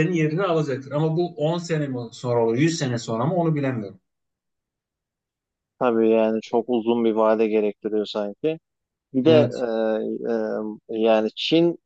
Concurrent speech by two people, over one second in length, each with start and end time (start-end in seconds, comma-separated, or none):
none